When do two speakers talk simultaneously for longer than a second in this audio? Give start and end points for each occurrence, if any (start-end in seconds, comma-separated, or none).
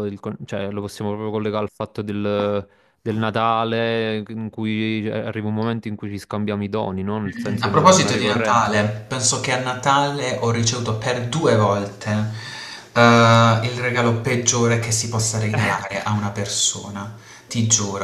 7.3-8.7